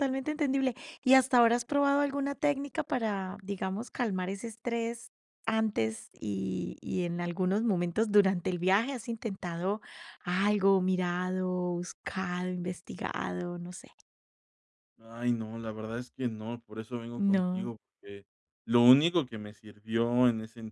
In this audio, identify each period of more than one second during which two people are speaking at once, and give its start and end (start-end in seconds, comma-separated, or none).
none